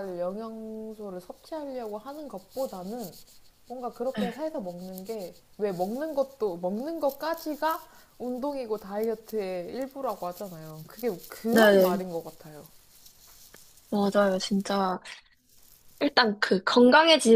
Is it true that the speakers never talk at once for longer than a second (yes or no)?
yes